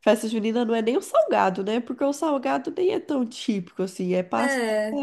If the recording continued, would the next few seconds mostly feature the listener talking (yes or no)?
no